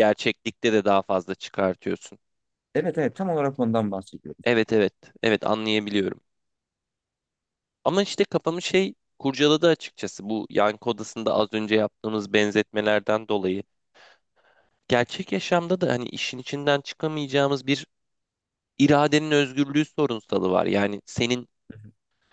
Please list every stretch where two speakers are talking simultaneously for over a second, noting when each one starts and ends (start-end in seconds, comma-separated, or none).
none